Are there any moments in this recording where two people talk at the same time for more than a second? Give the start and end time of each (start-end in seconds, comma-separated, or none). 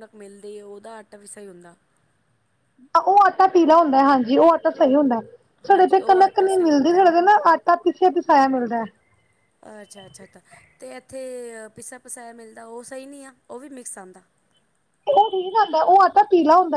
5.7-7.0